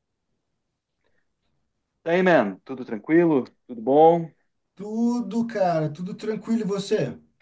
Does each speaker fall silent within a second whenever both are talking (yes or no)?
yes